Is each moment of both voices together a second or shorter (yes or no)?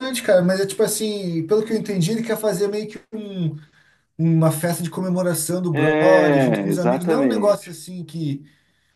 no